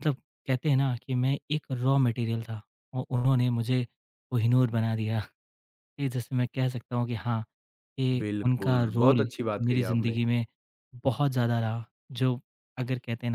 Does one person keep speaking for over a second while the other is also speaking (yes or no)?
yes